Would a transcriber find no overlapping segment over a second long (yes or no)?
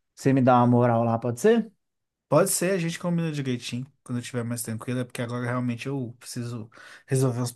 yes